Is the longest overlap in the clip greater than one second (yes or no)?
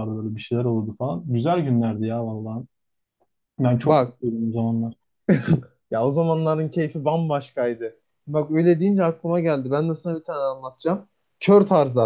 no